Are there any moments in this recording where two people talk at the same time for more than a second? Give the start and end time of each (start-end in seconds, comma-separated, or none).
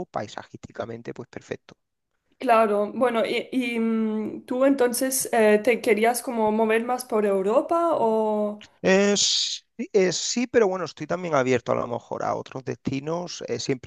none